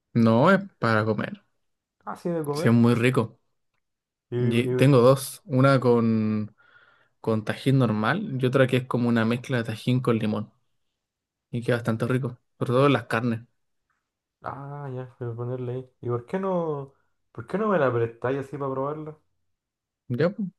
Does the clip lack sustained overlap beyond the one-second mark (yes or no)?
yes